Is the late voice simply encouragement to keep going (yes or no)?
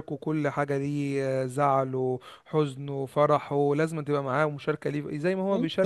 no